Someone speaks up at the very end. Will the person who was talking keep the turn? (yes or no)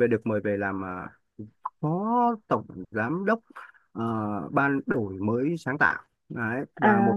yes